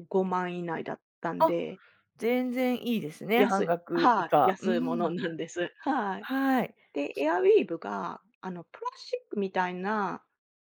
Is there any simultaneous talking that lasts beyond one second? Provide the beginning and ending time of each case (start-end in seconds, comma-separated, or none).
3.4-5.1